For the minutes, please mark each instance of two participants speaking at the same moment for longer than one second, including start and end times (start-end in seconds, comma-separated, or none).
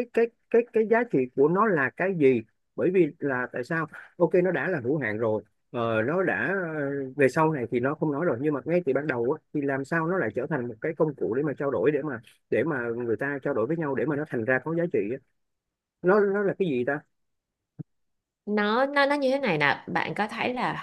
none